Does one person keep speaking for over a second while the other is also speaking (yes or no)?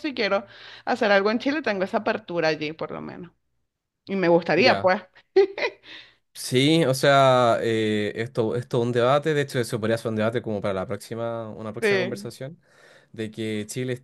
no